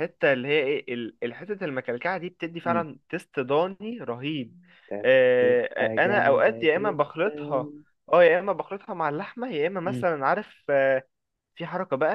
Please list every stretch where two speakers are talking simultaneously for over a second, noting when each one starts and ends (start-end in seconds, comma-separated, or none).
5.0-7.7